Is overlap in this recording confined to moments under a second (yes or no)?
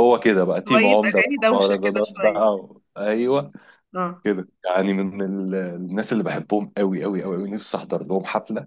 no